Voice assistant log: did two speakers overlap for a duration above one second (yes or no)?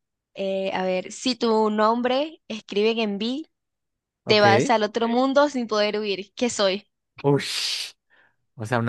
no